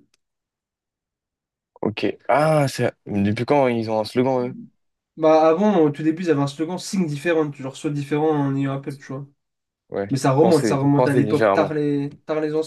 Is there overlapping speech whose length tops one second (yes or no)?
yes